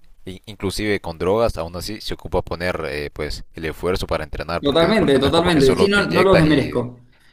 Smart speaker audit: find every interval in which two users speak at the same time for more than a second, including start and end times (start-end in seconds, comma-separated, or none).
4.6-6.8